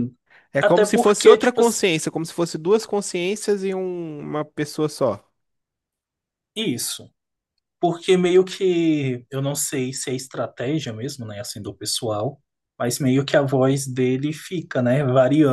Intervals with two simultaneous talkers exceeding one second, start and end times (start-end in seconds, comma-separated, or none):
0.6-1.8